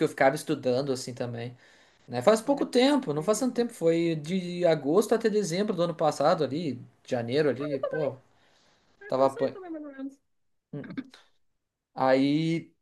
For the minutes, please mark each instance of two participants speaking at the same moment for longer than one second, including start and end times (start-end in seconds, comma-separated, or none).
2.4-3.6